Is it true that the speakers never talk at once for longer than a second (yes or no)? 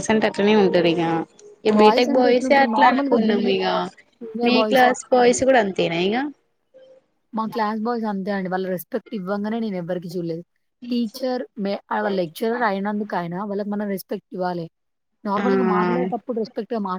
no